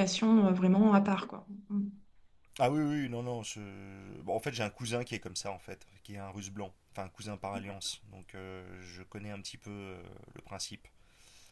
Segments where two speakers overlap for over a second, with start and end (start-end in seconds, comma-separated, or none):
none